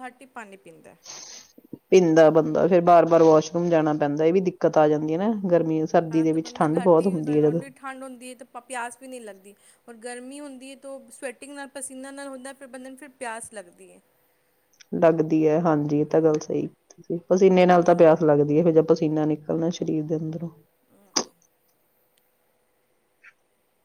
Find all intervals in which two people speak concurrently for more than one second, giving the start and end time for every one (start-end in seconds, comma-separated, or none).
6.1-7.6